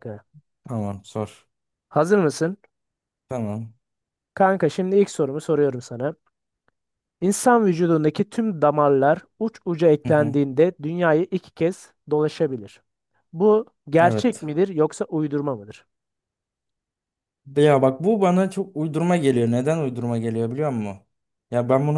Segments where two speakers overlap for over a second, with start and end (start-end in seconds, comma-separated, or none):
none